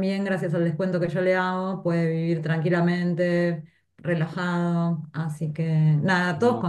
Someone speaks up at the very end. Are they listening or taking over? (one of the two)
listening